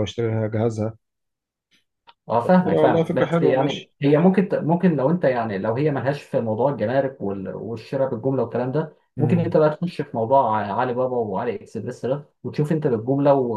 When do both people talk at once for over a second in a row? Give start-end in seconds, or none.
2.4-3.9